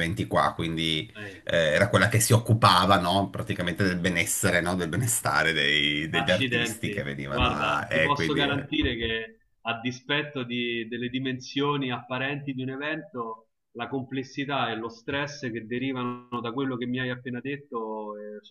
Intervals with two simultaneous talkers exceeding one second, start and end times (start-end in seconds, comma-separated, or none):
6.1-8.7